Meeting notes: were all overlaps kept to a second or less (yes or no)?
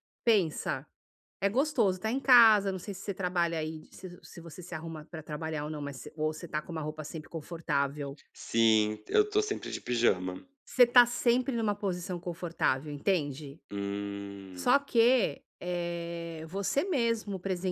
yes